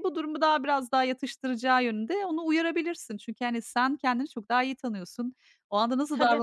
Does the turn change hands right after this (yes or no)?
no